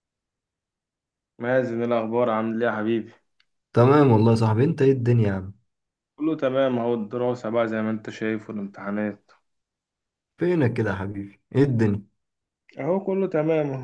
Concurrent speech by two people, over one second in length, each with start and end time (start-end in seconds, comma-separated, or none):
none